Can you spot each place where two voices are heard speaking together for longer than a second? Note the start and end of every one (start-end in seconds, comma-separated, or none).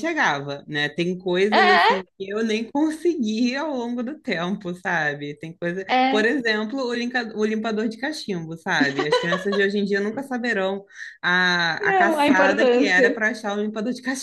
11.8-13.2